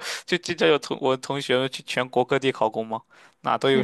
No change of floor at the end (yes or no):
yes